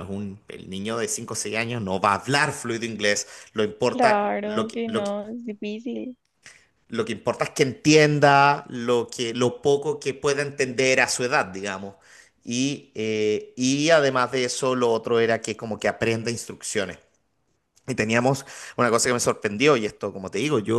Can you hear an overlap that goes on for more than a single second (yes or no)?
yes